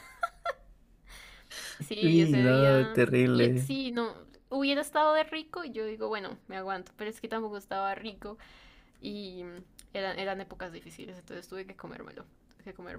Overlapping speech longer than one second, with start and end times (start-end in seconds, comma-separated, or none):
2.0-3.7